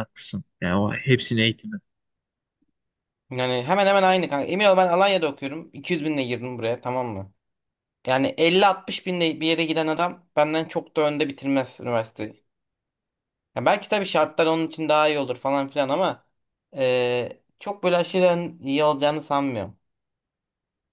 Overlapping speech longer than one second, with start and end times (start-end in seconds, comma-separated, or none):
none